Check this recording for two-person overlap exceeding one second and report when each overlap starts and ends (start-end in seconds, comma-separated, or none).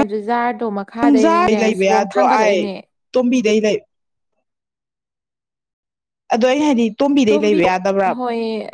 1.0-2.7